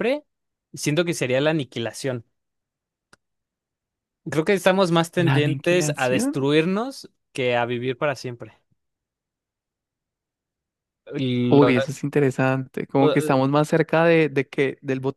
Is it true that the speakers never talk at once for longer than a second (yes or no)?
no